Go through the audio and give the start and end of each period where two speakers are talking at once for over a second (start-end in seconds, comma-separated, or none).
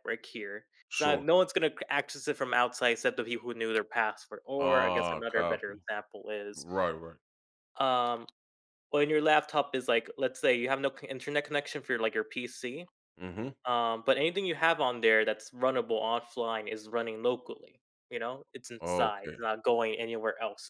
4.6-5.8